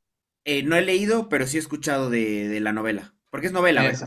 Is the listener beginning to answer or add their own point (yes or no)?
yes